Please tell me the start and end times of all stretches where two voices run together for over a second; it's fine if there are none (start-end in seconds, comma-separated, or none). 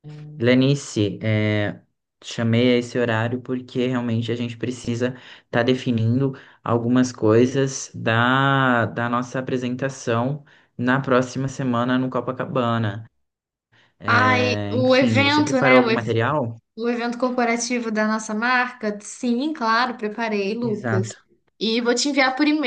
14.0-16.1